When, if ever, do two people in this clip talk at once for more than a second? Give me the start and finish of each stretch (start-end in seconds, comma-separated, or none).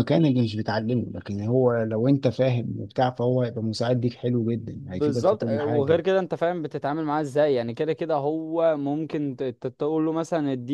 4.7-6.1